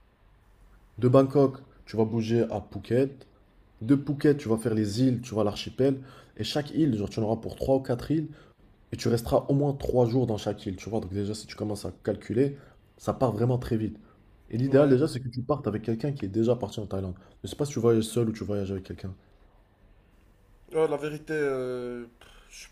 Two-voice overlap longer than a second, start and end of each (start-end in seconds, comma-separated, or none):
none